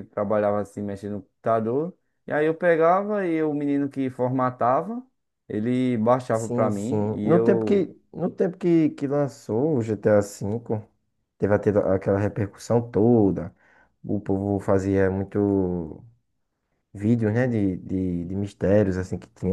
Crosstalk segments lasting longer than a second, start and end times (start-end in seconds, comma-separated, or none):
6.3-7.8